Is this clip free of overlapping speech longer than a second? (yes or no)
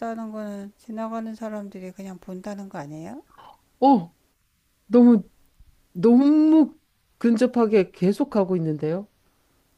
yes